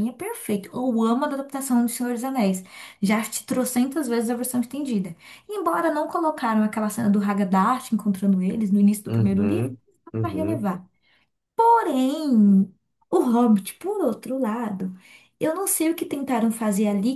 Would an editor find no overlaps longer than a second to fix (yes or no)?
no